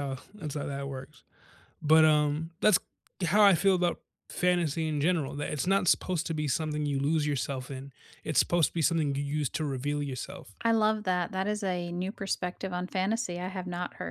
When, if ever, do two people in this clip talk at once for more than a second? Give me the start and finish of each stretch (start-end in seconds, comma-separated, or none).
none